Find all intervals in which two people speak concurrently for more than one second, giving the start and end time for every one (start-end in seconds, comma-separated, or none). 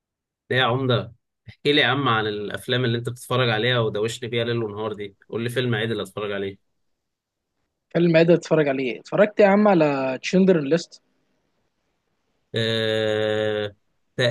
none